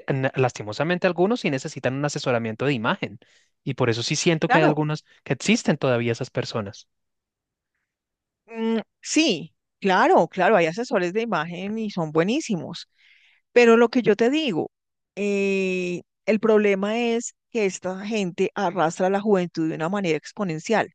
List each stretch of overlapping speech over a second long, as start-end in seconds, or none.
none